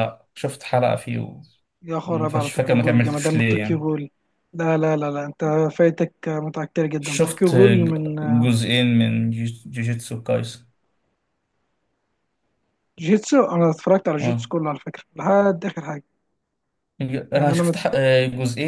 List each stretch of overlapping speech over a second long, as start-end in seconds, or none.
2.1-3.9